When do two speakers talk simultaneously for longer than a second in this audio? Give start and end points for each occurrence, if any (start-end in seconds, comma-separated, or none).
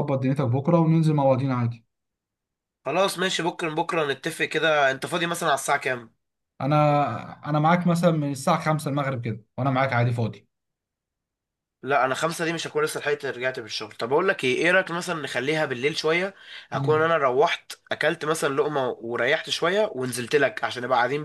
none